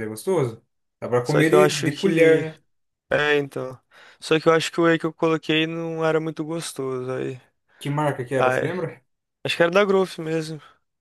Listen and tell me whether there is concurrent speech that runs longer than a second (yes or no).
yes